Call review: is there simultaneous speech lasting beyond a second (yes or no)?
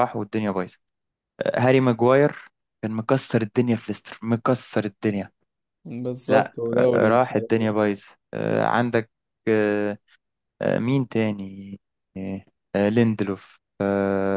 yes